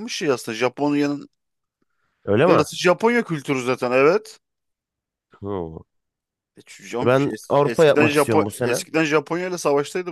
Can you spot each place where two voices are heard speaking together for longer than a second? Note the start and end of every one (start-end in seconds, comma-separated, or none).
7.0-8.8